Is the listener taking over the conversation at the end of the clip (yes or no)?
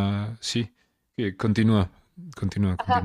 yes